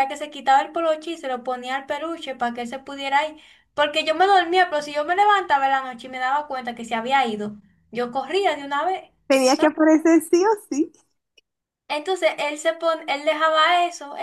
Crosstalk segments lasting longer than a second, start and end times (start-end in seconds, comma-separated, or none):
none